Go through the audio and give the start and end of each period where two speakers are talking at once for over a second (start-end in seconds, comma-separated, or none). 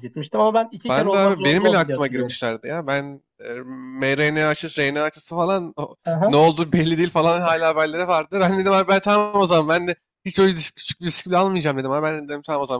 0.9-2.4